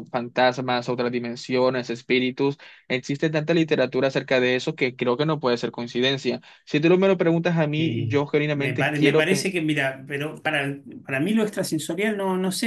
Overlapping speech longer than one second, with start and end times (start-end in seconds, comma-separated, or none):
7.8-9.5